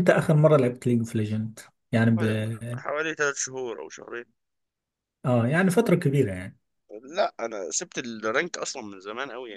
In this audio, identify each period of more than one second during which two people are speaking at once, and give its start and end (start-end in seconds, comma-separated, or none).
none